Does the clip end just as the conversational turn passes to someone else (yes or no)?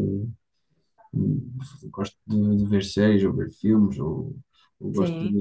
no